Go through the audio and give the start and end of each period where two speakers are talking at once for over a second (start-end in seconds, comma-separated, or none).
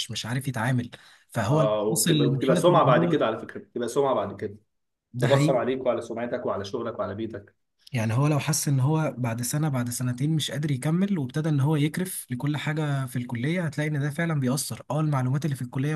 1.5-3.2